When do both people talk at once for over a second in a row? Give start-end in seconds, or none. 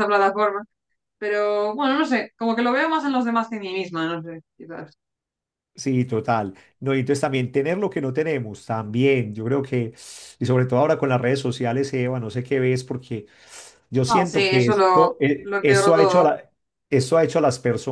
14.1-16.3